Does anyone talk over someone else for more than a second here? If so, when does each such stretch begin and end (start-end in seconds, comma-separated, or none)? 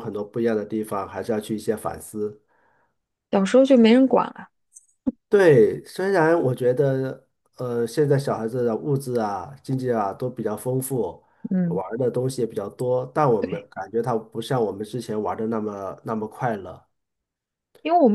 none